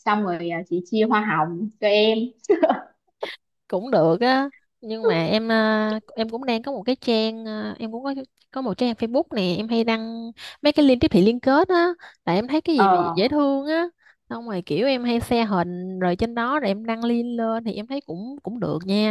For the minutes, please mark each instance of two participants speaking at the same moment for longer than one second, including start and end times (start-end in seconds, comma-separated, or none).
none